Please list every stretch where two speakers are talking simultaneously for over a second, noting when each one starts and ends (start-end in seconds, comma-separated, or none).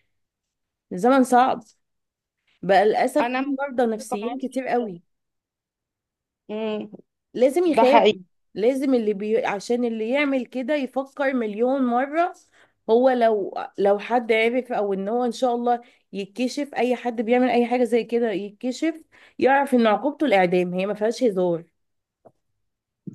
3.2-4.8